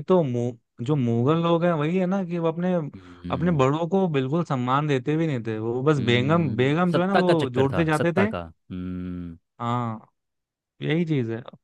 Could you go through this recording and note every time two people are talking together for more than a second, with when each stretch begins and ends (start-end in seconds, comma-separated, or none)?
6.0-8.3